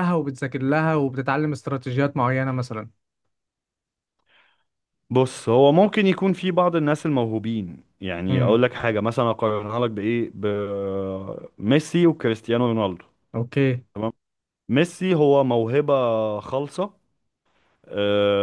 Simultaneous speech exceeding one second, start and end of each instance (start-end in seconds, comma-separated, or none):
none